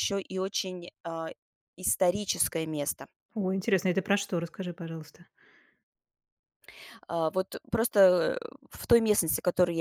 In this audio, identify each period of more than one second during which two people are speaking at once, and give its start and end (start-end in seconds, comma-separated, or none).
none